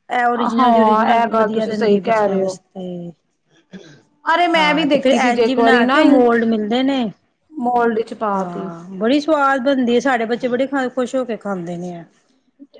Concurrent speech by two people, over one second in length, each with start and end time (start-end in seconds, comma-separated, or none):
0.6-2.6, 4.5-6.0